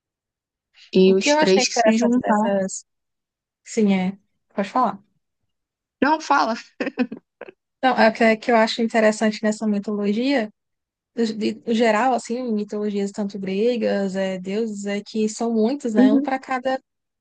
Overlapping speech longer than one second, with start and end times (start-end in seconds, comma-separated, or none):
1.1-2.5